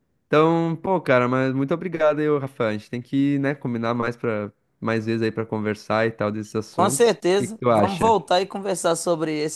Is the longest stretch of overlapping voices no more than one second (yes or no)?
no